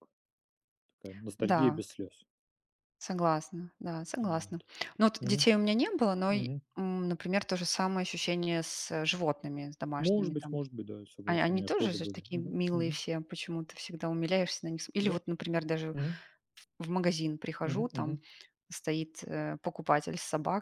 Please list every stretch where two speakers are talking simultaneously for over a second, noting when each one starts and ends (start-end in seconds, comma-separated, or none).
11.2-13.0